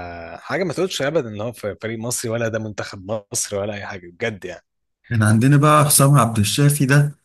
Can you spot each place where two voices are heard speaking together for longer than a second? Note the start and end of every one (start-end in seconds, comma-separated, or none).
none